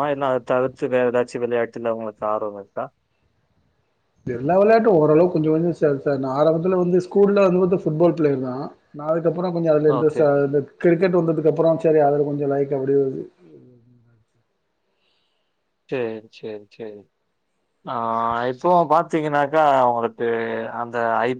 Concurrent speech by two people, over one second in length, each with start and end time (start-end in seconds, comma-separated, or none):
none